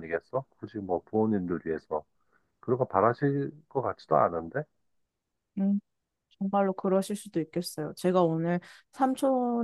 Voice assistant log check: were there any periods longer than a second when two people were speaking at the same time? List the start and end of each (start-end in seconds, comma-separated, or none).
none